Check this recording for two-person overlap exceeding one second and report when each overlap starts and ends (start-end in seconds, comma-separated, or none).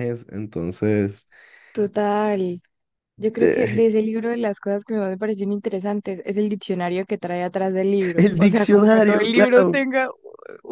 8.2-9.8